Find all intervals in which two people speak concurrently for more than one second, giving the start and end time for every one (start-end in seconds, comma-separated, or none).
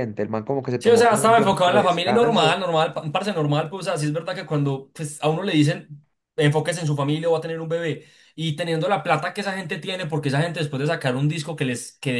0.8-2.6